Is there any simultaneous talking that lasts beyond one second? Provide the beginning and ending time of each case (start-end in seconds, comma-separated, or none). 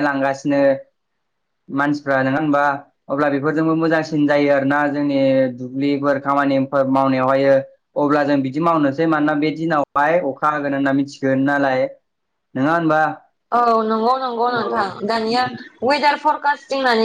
none